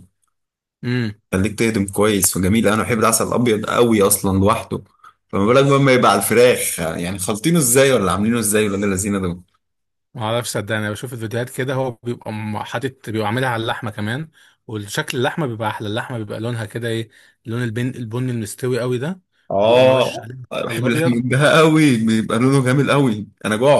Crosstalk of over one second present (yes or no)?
yes